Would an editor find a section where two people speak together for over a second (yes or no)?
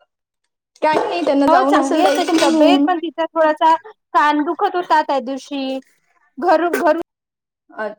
yes